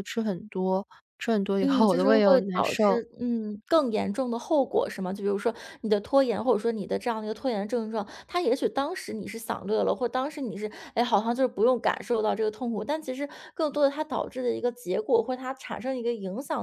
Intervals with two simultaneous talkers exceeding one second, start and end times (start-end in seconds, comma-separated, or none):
1.6-3.0